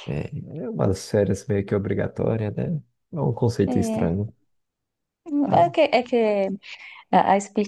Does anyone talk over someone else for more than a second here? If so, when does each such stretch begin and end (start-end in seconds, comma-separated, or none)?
none